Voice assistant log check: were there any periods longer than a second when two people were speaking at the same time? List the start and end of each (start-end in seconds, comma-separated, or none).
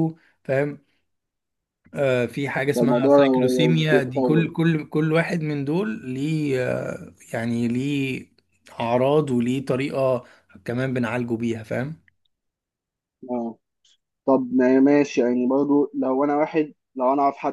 2.8-4.5